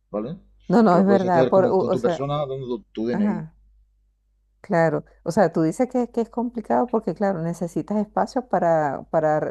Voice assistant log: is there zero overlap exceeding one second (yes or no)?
no